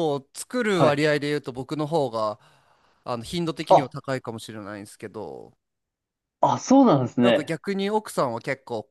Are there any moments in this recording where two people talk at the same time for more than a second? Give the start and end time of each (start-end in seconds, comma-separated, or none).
none